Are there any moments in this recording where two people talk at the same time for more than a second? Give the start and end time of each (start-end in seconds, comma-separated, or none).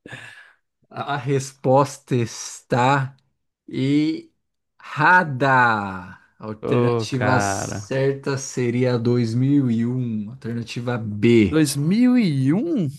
6.6-7.9